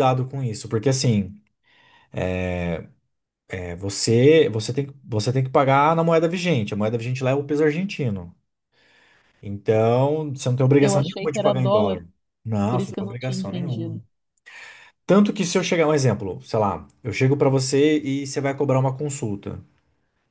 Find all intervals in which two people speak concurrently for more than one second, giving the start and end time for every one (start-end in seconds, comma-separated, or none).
10.8-12.0, 12.7-14.0